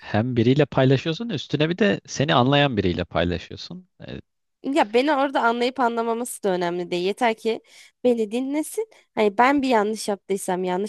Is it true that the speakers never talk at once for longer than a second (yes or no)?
yes